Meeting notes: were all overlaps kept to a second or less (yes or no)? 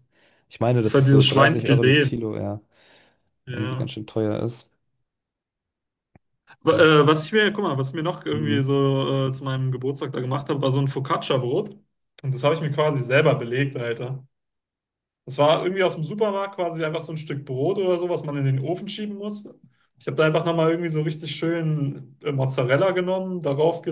no